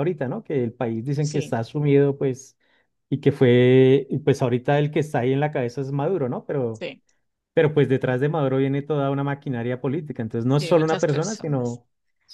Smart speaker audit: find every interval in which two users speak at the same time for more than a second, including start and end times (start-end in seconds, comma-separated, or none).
10.5-11.8